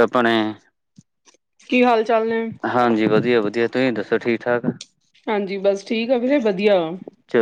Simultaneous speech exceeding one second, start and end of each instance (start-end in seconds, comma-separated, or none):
none